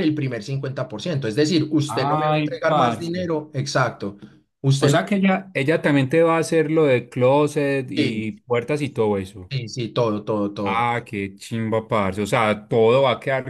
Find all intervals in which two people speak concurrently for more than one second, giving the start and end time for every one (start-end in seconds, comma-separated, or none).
1.9-3.1